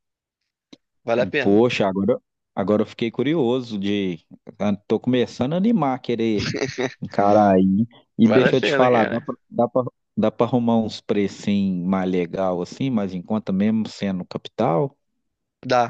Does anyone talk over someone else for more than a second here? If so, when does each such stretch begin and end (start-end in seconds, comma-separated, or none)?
8.2-9.4